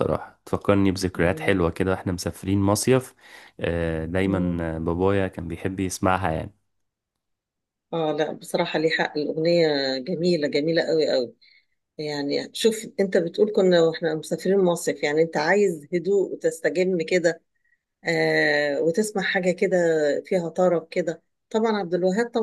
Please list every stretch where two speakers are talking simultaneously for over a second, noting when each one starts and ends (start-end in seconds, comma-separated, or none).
none